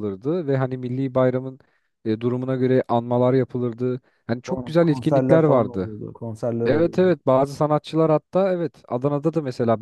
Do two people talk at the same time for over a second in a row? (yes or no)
yes